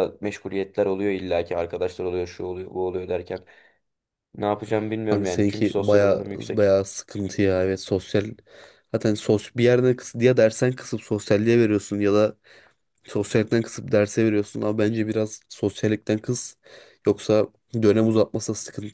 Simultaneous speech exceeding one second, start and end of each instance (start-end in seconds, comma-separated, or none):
5.1-6.7